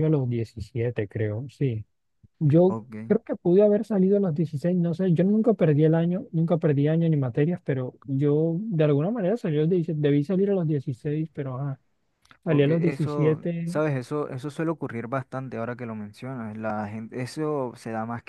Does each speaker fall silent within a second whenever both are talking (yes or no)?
no